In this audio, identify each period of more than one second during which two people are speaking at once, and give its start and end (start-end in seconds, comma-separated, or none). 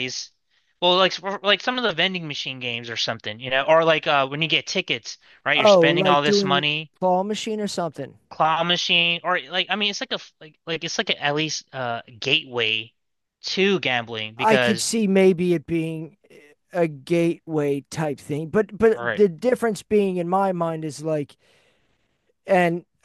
5.6-6.9